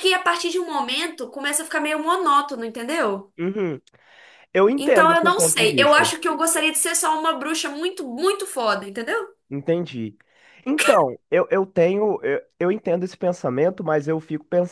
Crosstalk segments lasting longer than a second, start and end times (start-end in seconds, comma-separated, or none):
4.8-6.1